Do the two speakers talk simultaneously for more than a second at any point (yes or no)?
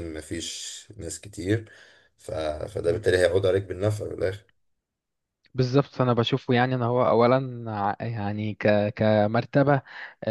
no